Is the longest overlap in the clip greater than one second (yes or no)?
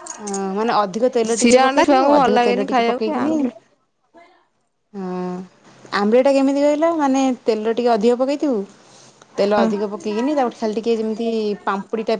yes